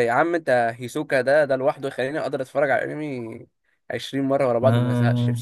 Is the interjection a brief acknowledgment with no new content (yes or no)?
no